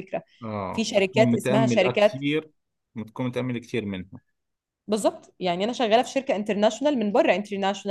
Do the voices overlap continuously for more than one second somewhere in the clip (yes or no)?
yes